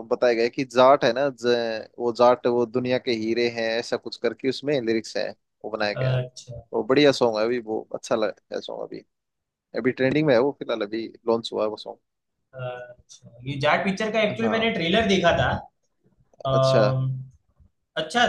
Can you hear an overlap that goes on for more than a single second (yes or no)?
no